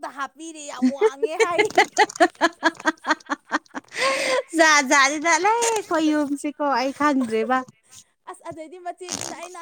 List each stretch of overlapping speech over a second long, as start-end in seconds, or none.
none